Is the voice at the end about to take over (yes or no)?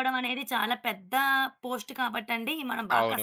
yes